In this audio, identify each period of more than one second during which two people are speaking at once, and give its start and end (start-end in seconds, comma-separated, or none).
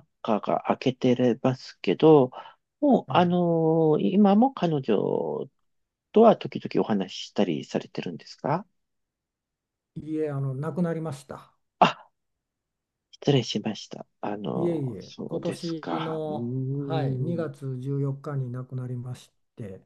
14.5-17.6